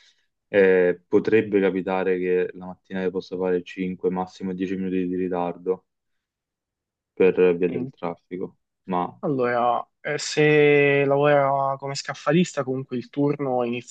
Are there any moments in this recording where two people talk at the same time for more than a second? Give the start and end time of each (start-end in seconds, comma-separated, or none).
none